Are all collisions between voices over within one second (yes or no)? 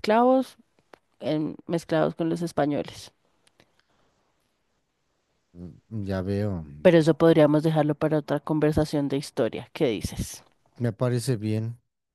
yes